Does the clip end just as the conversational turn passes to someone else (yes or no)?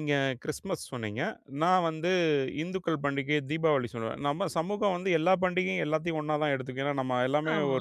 no